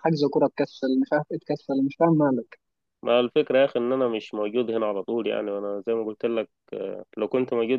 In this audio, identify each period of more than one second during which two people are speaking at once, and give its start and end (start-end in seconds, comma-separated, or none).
none